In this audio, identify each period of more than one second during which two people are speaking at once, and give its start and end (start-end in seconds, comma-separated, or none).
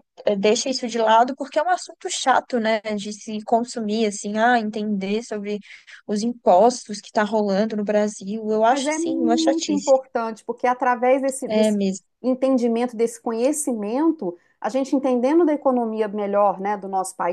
8.7-9.9